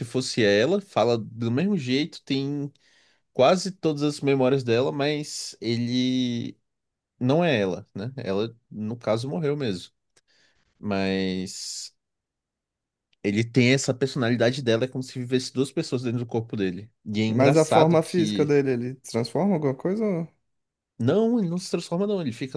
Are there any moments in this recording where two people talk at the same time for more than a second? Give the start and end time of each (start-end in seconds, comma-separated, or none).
17.3-18.6